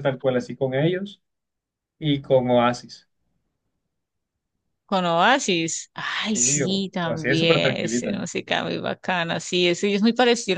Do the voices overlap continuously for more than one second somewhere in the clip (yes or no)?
yes